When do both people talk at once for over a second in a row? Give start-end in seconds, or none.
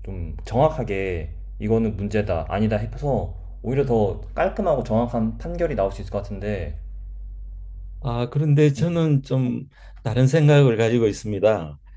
none